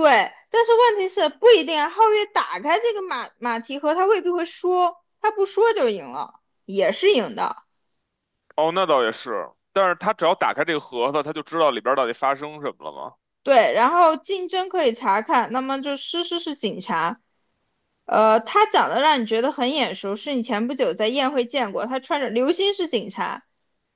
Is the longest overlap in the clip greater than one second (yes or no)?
no